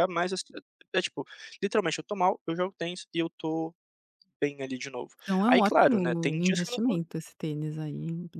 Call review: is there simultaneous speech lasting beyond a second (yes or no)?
yes